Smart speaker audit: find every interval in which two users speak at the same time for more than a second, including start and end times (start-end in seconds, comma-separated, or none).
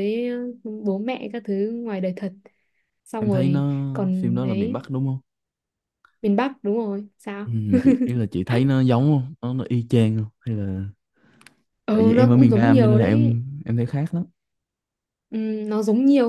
3.2-4.8, 11.9-13.4